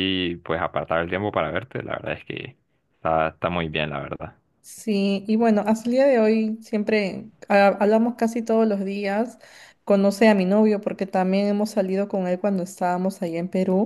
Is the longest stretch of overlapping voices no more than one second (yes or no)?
yes